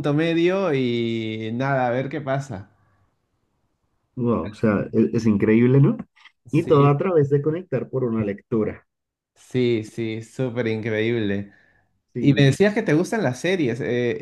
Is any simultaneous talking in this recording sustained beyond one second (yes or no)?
no